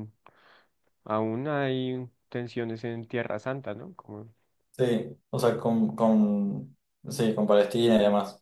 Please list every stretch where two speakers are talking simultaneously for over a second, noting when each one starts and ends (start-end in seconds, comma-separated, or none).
none